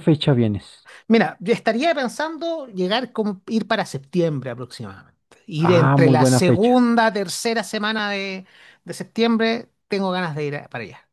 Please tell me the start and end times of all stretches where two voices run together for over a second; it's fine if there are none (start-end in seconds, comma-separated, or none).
5.6-6.8